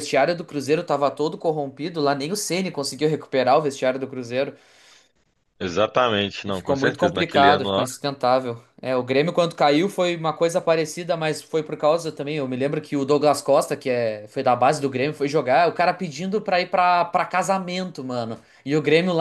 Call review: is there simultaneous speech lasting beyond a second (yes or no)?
yes